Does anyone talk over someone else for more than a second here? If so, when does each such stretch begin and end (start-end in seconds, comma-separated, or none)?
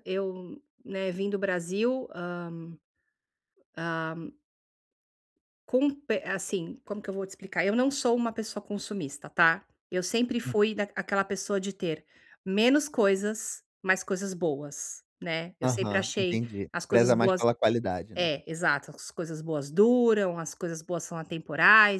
15.6-17.4